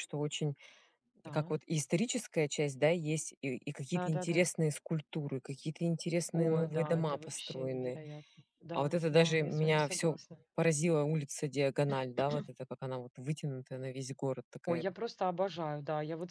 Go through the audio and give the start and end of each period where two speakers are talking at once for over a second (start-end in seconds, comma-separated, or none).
6.3-8.0, 8.7-10.2